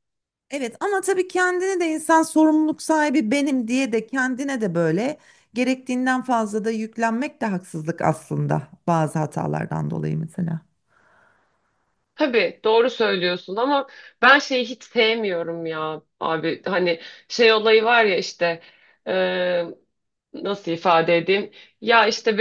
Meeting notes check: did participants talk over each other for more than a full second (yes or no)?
no